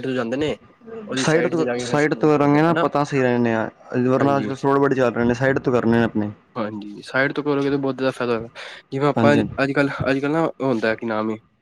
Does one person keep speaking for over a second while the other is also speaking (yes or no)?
yes